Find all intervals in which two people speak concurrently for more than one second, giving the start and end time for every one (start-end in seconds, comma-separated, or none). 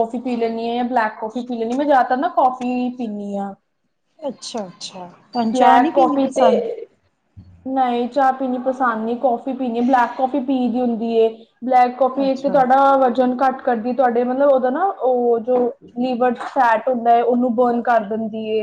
none